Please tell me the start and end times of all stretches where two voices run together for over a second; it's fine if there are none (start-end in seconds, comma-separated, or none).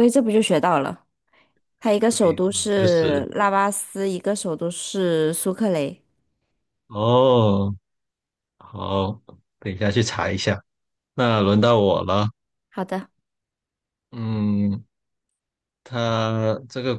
2.0-3.2